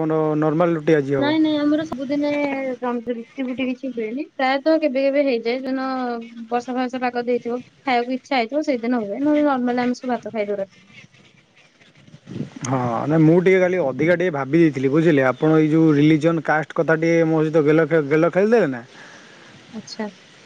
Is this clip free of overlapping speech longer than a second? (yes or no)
yes